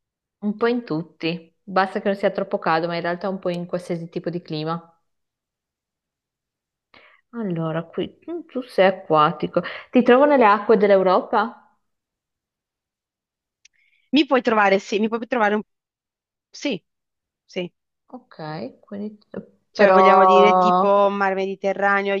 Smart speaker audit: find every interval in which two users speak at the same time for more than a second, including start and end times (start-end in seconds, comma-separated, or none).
19.7-21.1